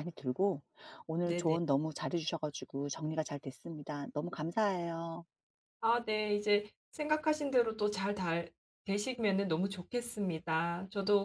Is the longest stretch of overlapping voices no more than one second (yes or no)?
yes